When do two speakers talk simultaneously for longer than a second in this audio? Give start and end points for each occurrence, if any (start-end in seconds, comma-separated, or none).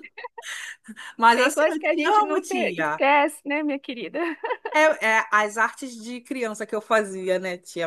1.3-3.0